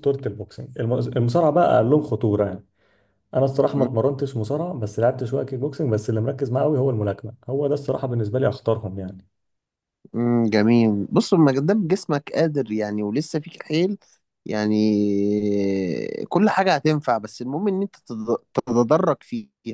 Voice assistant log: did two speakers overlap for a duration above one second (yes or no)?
no